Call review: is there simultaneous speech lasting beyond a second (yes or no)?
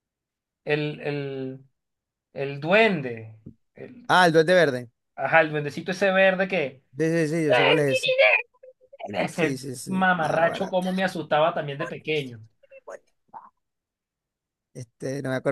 yes